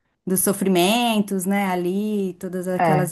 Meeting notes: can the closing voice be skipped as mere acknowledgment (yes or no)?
yes